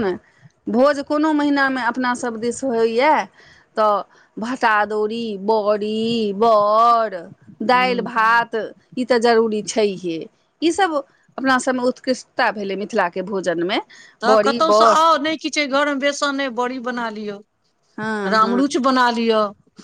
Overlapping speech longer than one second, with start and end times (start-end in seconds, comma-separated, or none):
none